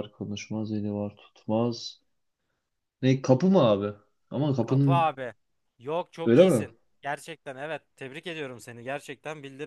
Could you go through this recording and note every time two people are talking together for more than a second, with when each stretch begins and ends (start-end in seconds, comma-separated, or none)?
none